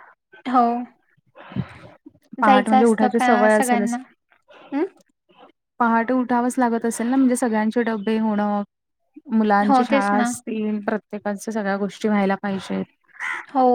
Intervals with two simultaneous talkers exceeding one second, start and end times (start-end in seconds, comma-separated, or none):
2.5-4.0